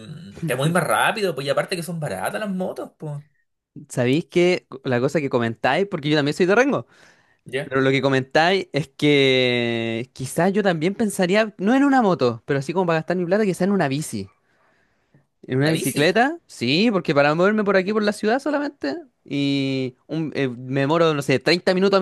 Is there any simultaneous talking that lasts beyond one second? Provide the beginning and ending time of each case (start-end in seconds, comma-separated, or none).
none